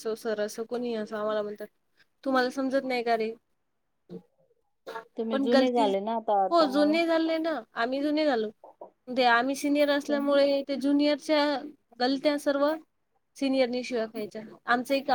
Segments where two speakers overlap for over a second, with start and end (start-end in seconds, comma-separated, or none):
none